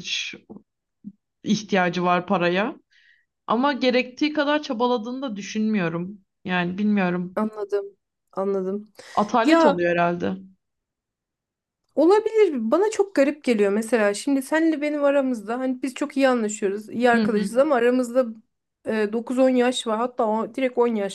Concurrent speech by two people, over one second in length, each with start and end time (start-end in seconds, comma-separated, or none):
none